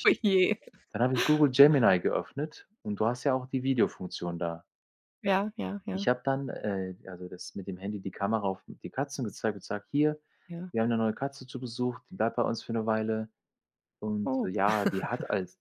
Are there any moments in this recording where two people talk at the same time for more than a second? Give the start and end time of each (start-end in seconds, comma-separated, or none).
none